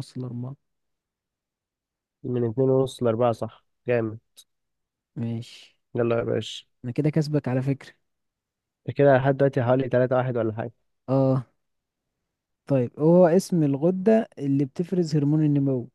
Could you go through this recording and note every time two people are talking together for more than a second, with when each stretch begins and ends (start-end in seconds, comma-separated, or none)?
none